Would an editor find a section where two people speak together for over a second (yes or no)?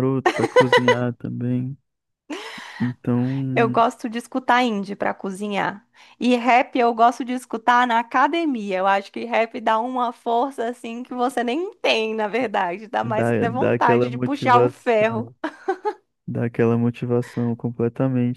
yes